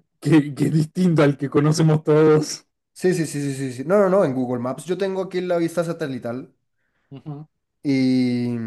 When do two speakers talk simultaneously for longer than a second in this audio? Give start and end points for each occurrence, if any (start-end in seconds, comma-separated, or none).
none